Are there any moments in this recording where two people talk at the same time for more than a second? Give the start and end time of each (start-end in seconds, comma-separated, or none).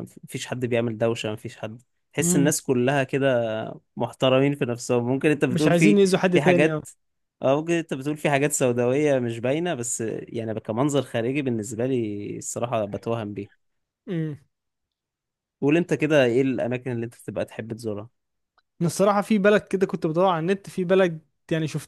5.5-6.8